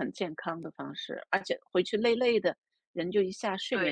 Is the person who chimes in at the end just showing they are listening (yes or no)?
no